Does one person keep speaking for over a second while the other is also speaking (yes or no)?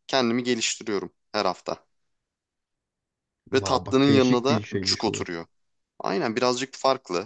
yes